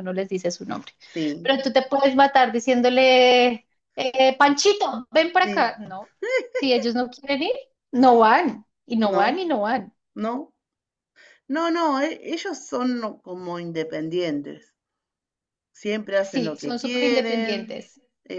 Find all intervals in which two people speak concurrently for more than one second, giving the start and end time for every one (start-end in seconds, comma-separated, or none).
16.2-17.7